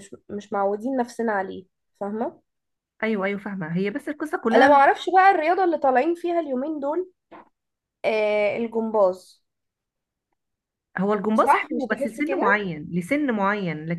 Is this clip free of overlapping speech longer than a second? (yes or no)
no